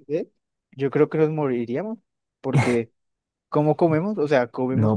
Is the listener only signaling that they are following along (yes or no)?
no